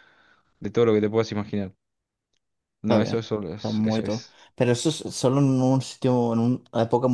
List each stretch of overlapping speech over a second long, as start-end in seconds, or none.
2.8-4.4